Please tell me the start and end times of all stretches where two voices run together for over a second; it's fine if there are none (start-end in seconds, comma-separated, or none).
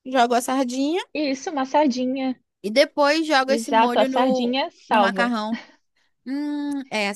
3.5-5.3